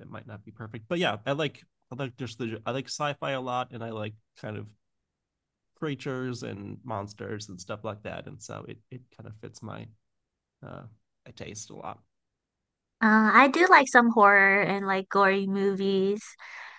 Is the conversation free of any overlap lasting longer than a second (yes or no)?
yes